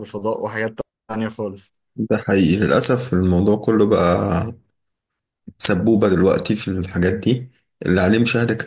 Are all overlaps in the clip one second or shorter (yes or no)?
yes